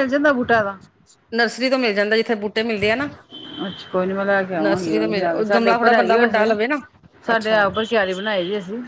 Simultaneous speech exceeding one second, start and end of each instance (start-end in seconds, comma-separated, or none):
4.6-6.5